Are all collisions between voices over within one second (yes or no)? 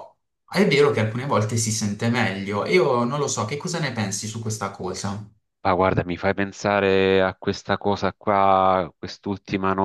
yes